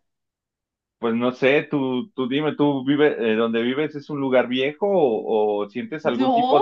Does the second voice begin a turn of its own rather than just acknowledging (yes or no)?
no